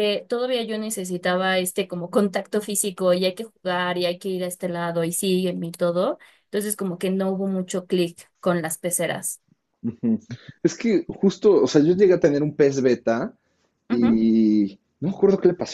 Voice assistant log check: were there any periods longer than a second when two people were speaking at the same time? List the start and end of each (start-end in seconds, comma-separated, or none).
none